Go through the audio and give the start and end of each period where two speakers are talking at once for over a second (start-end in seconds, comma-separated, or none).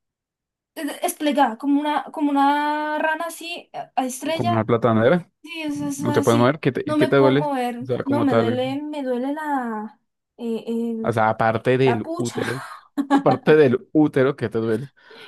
5.7-8.6